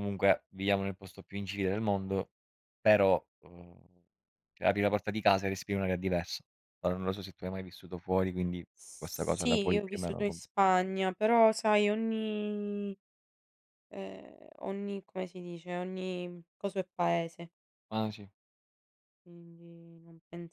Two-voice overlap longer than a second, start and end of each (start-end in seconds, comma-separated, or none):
8.8-10.4